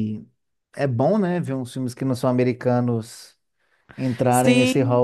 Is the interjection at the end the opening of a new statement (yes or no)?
yes